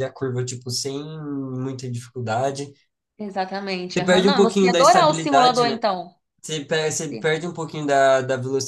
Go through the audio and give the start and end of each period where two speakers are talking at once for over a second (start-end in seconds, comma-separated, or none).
4.0-5.8